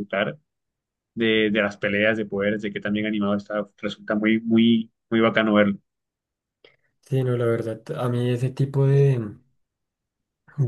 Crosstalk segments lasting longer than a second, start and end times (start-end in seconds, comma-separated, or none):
none